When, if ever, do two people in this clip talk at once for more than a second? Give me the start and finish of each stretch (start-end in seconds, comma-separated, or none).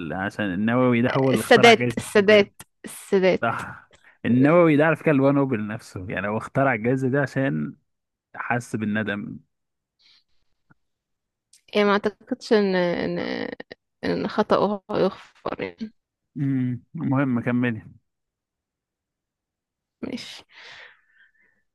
1.1-2.5